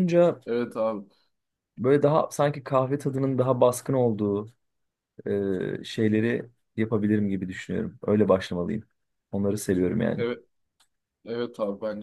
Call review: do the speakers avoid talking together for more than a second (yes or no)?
yes